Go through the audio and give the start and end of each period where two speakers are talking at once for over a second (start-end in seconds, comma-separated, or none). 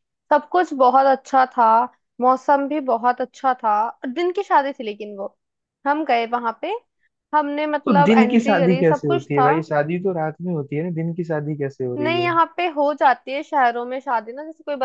7.8-9.5